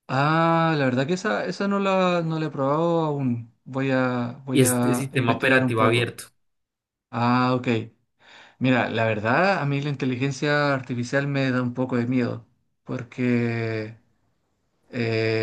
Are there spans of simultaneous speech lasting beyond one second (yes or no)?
yes